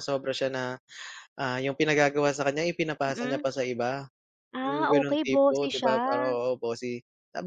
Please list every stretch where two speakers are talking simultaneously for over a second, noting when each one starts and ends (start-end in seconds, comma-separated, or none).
4.6-6.0